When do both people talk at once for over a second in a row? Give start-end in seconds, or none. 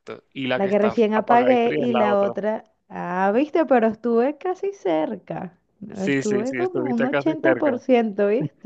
0.6-2.3, 5.9-7.8